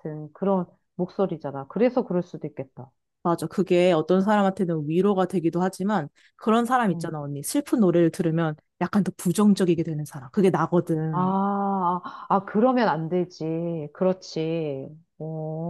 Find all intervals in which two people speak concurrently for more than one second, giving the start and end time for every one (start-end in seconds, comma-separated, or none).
none